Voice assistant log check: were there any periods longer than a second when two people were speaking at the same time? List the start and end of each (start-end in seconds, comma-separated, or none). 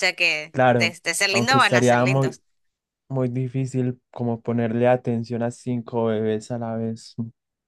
0.5-2.4